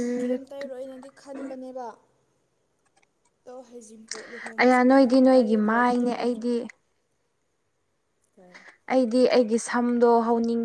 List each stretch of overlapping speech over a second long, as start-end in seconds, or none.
4.6-6.5